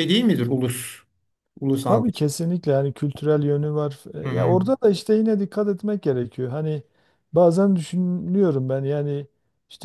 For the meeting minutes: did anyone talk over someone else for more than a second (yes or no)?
no